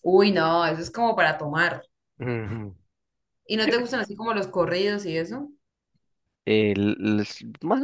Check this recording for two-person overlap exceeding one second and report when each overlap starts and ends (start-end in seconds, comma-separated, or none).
none